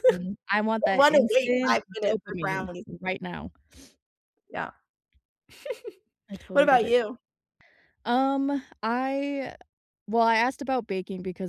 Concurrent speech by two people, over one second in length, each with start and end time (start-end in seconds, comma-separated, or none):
0.8-2.9